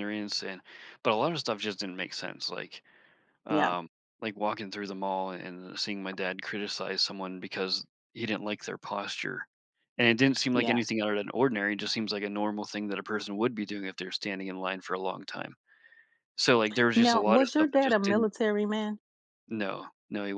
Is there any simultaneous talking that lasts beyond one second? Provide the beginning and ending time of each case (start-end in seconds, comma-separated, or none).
16.9-18.3